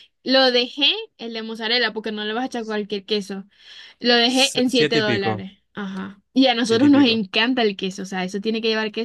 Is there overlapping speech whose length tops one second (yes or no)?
yes